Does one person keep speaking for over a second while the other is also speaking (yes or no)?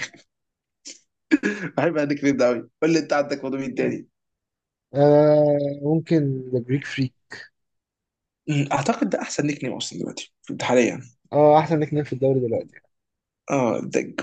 no